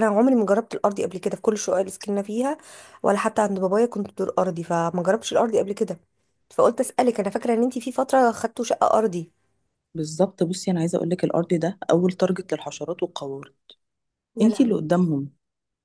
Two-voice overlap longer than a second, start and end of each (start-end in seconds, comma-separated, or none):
none